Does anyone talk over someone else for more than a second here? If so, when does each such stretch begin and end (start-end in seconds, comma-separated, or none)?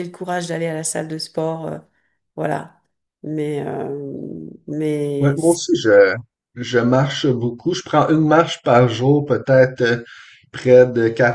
none